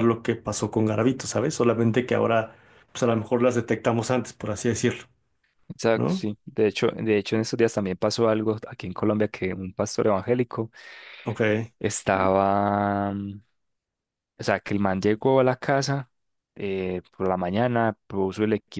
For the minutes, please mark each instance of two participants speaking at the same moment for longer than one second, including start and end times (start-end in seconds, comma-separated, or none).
none